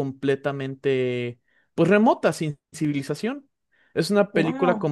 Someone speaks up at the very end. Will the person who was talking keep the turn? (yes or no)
yes